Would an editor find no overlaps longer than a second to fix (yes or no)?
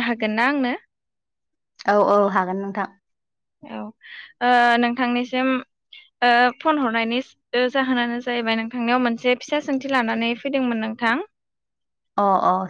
yes